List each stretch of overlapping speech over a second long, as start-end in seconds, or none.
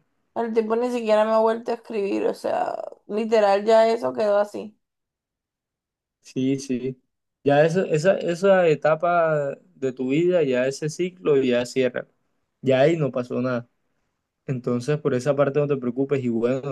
none